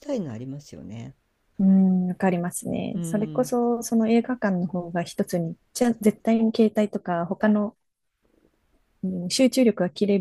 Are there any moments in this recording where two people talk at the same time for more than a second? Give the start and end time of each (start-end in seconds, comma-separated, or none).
none